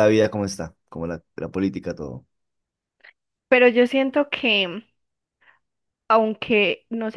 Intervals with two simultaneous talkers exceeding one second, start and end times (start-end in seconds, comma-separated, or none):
none